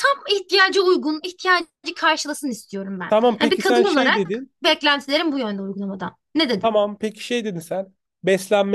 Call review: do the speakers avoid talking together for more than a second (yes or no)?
no